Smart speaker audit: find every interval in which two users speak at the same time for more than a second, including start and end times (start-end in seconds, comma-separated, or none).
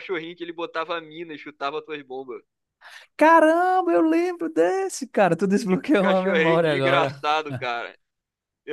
5.7-7.2